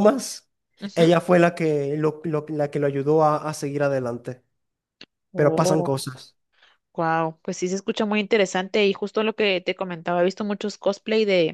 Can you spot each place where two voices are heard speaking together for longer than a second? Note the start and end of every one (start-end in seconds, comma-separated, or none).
none